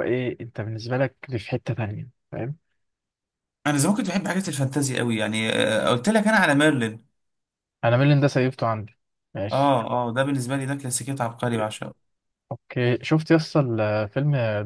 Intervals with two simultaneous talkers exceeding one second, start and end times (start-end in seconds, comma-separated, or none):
none